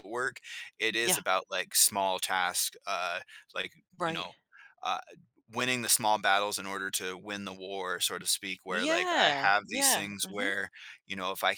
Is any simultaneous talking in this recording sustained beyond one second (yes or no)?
yes